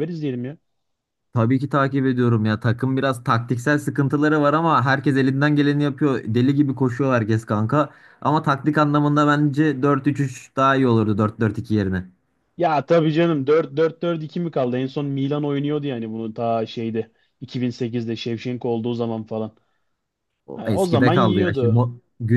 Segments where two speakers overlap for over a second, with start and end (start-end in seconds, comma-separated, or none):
20.6-21.9